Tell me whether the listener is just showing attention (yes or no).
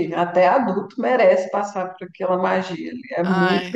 yes